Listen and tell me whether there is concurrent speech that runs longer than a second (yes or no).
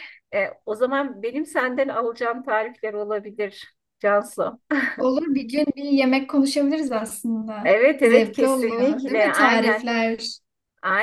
yes